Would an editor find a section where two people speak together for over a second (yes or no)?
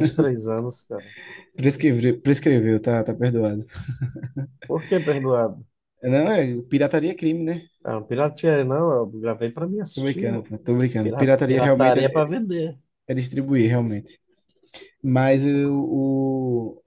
yes